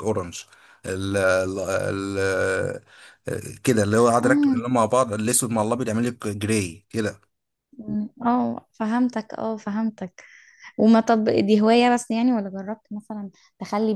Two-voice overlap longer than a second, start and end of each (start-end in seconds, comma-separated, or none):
none